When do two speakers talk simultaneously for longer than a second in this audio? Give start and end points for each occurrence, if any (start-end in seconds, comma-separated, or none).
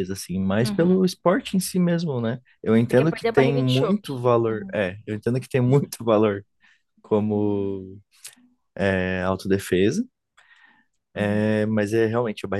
2.9-4.8